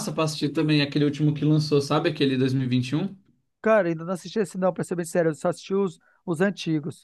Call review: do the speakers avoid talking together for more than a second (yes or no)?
yes